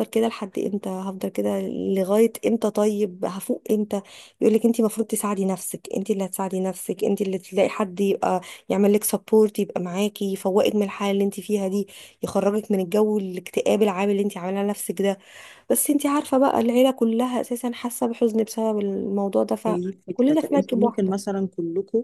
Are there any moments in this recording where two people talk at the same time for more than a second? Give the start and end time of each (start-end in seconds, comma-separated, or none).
19.7-21.3